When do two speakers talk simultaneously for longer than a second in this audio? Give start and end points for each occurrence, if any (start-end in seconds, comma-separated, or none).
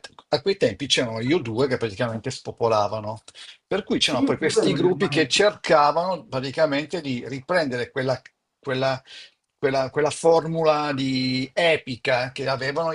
4.0-5.8